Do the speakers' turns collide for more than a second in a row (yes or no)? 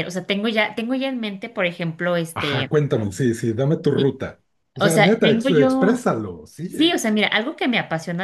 yes